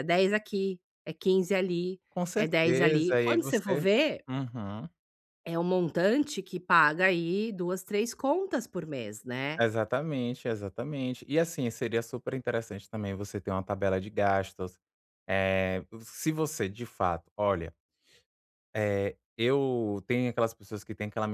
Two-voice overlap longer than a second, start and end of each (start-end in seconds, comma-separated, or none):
2.4-3.8